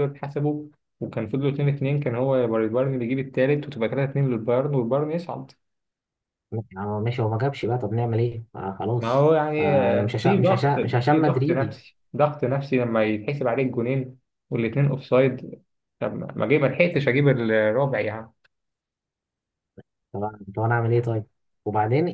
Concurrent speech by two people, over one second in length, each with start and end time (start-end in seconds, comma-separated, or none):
9.0-11.8